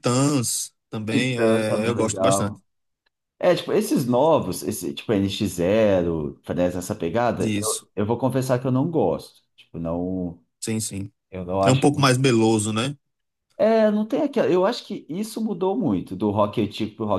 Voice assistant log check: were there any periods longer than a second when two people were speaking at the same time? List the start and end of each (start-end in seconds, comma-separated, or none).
1.1-2.6